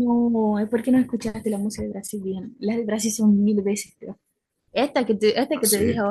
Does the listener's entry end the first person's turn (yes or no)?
no